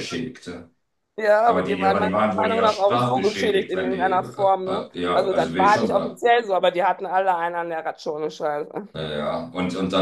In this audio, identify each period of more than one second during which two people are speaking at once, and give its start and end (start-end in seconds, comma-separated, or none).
1.5-6.2